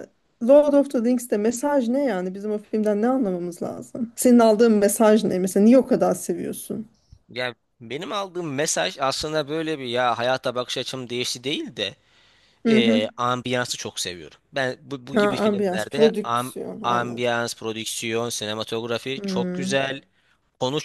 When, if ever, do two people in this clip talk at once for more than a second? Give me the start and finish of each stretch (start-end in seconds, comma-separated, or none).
15.1-17.3